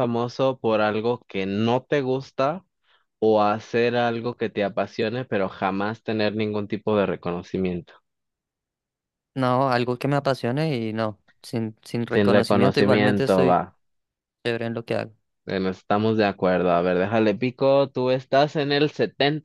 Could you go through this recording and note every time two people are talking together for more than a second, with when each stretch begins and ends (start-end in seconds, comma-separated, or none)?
12.1-13.6